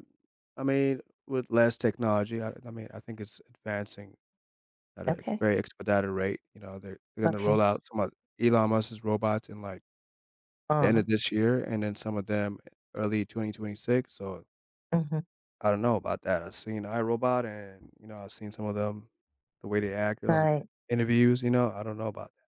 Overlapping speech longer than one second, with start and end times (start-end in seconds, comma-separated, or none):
none